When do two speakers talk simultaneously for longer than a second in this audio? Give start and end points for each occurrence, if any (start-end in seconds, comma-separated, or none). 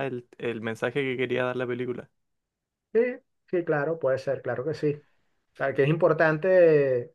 none